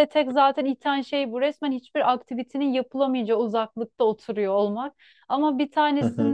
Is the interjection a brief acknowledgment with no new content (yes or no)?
yes